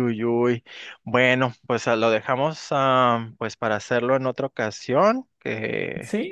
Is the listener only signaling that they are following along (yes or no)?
no